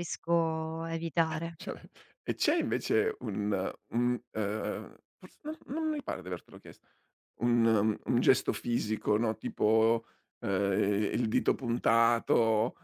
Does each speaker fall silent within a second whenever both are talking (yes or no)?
yes